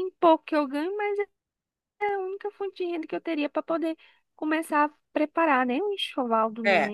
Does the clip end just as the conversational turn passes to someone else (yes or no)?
yes